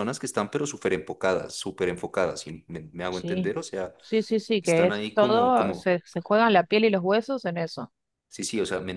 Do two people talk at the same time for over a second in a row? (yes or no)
yes